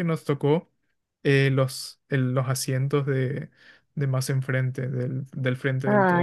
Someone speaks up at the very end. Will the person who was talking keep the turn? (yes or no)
yes